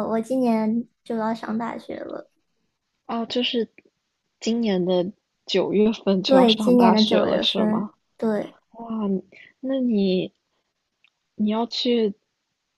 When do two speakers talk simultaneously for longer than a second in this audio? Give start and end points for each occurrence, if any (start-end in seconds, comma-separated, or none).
6.2-7.9